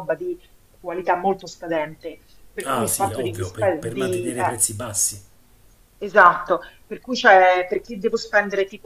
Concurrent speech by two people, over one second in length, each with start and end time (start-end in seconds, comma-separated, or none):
2.6-4.6